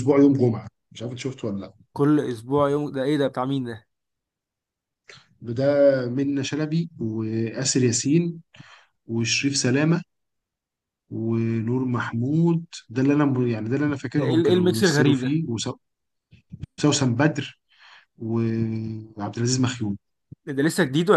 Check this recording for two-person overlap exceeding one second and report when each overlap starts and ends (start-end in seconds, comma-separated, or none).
14.2-15.4